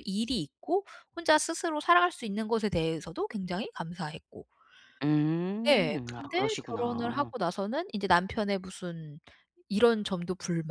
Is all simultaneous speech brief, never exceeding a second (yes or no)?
no